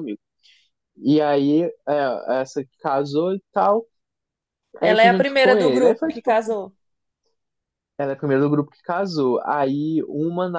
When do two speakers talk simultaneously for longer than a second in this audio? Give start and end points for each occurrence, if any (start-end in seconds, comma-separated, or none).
4.8-6.4